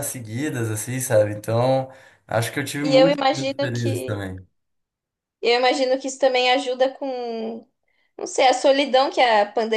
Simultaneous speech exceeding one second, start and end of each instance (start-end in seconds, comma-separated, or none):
2.8-4.2